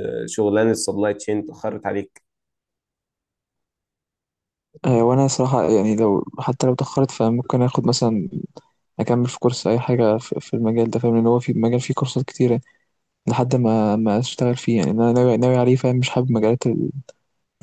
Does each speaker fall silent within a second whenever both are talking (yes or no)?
yes